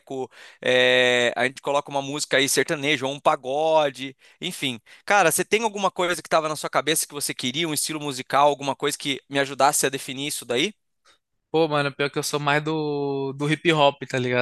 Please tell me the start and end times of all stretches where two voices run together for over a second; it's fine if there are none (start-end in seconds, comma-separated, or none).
none